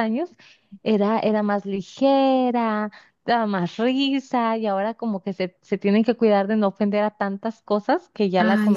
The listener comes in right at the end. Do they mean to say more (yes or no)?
yes